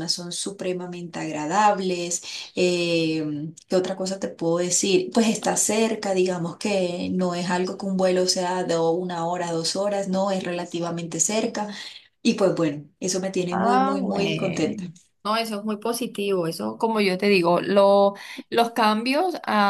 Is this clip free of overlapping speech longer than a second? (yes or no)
no